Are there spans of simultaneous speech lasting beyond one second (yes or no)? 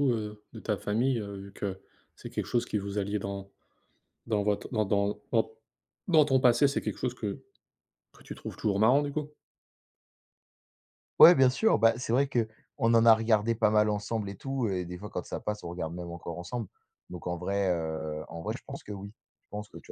no